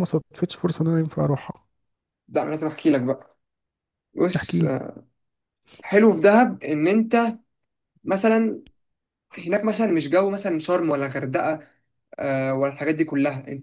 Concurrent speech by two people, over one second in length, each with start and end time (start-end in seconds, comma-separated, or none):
none